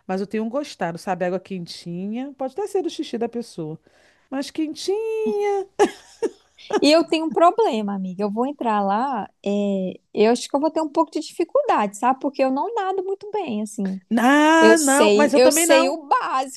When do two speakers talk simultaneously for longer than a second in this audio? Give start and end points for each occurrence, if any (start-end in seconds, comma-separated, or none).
14.6-16.0